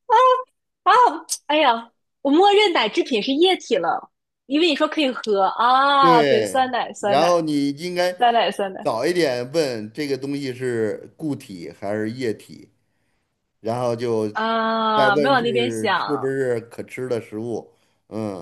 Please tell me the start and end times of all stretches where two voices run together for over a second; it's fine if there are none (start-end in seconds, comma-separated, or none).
6.0-7.4, 15.0-16.3